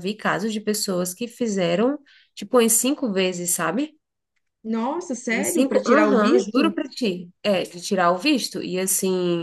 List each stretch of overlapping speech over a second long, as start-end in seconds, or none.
5.3-6.7